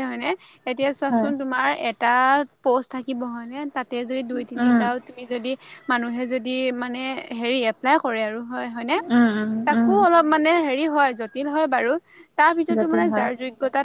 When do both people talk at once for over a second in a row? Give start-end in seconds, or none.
none